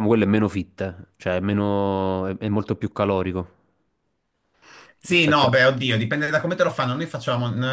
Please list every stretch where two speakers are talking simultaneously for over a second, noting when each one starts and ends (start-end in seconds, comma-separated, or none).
none